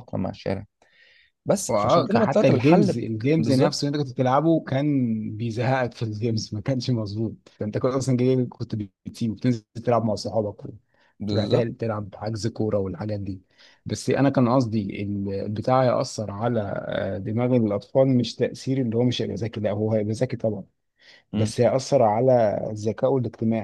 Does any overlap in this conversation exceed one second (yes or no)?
yes